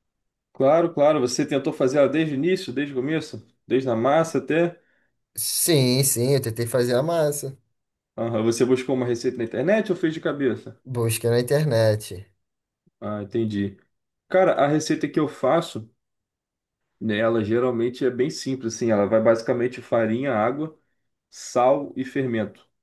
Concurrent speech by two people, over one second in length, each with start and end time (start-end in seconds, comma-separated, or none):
none